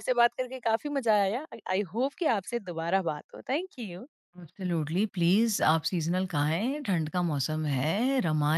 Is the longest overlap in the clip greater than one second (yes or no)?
no